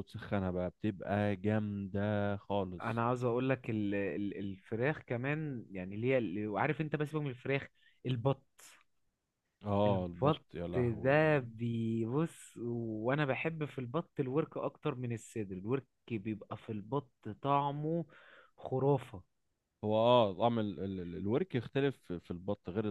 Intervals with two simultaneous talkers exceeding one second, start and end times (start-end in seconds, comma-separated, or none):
9.8-11.5